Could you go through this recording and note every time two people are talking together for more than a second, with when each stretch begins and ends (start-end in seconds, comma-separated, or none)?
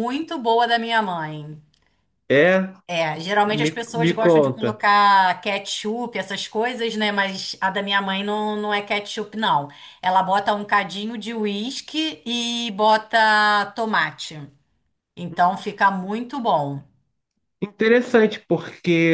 3.4-4.8